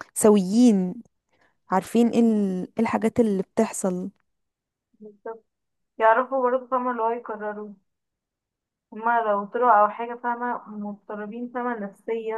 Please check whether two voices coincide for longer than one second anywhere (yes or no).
no